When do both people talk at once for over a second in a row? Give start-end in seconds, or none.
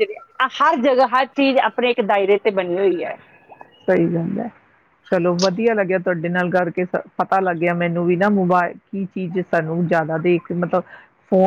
none